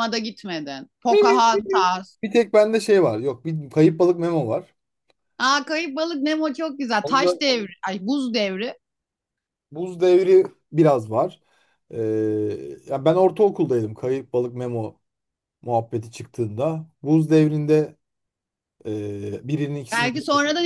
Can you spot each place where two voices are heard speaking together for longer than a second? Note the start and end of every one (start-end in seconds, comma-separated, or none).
none